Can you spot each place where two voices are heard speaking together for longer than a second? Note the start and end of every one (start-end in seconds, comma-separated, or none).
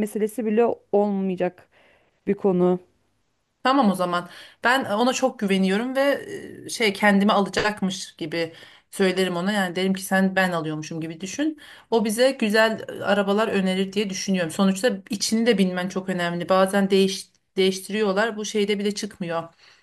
none